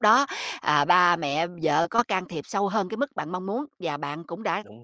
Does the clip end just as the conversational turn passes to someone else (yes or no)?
no